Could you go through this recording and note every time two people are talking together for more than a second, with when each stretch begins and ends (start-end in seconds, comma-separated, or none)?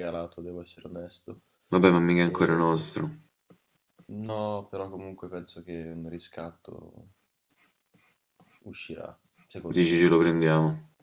none